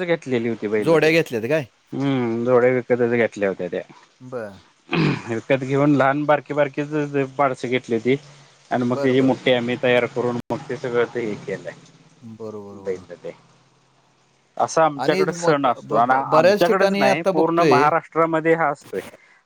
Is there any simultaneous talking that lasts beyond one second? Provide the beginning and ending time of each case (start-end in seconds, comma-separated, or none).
15.0-17.9